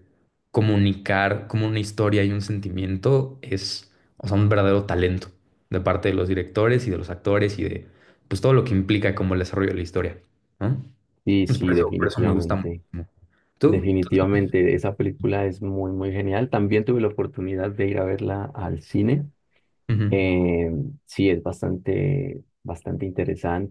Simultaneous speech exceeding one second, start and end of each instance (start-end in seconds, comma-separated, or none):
11.4-12.8